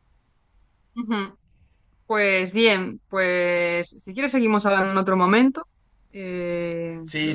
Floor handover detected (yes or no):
yes